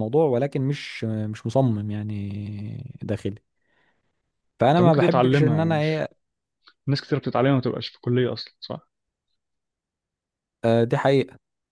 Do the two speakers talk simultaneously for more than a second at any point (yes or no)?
yes